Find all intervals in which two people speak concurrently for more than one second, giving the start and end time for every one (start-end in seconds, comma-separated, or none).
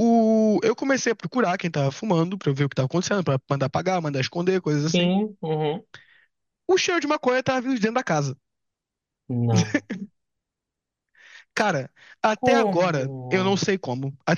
12.3-13.6